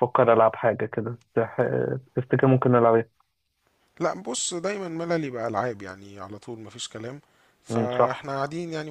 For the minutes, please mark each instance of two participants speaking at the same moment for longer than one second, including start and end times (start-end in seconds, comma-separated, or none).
none